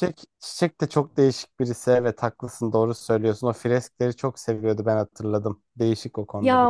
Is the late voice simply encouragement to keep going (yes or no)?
no